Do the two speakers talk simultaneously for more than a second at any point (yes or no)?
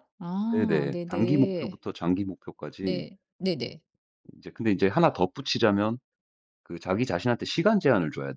yes